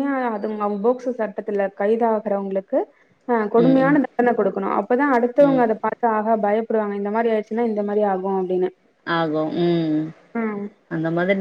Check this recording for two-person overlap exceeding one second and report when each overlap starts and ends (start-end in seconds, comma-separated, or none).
none